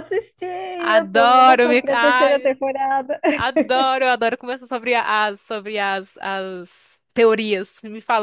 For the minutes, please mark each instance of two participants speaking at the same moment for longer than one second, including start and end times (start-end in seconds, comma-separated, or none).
0.8-2.5